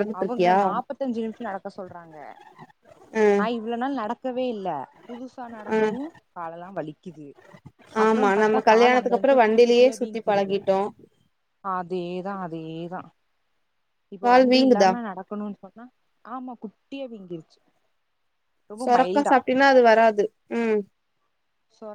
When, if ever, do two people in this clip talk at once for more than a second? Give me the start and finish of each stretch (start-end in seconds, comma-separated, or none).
8.1-10.6